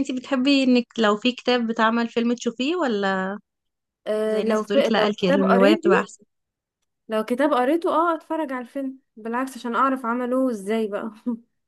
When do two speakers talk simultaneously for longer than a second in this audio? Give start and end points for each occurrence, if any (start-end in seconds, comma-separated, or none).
4.2-6.1